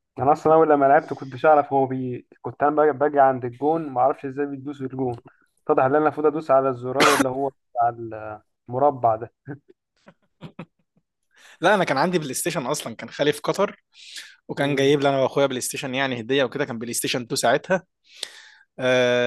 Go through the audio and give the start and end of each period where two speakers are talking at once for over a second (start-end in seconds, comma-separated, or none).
none